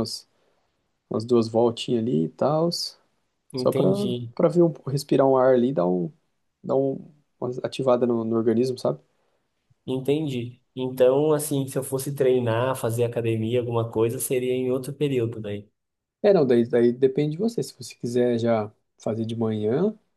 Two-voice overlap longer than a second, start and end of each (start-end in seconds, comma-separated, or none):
none